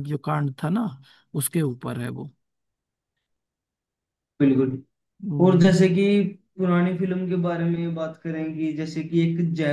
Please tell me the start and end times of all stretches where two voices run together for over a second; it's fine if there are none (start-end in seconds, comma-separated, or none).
none